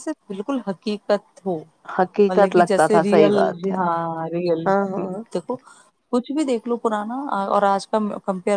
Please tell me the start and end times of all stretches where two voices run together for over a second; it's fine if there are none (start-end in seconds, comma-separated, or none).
2.0-3.4